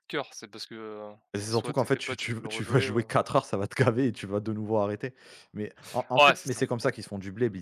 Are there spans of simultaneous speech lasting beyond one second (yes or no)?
yes